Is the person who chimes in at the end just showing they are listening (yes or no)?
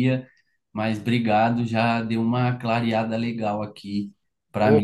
no